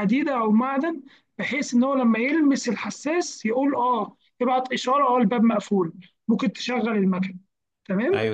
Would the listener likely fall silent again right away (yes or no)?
no